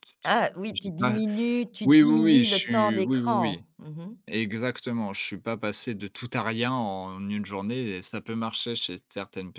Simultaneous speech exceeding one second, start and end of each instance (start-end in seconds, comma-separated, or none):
1.8-3.6